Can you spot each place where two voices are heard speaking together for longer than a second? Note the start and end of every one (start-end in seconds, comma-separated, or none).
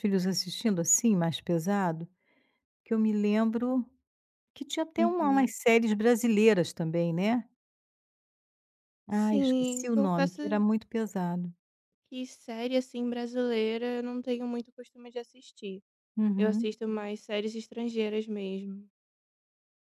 9.1-10.7